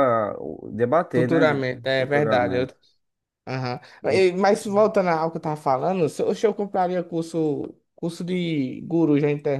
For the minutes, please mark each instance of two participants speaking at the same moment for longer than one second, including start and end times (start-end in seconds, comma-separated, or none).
1.1-2.7